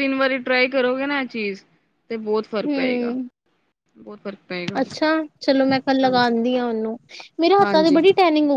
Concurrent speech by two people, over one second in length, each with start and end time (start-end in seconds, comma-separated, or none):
none